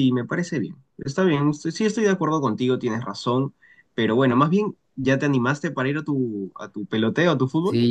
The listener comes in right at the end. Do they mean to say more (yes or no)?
yes